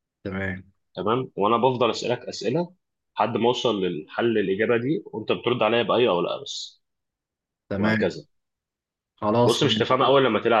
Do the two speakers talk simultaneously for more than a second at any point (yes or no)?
no